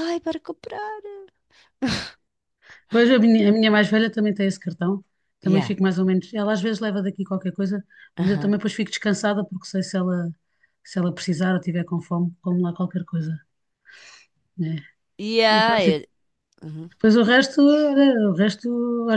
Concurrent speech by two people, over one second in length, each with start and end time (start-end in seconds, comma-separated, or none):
none